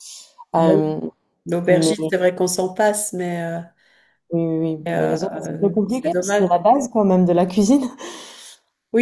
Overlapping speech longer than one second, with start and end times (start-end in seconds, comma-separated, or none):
4.8-6.5